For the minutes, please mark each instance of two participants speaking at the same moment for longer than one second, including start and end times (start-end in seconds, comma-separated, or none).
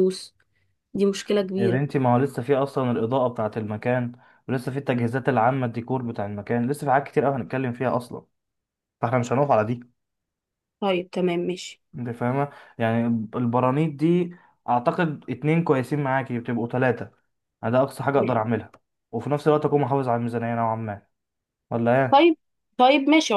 none